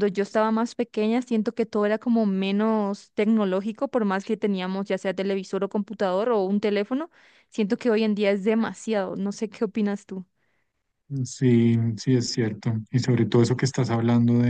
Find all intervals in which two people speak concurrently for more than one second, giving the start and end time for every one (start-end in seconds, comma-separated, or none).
none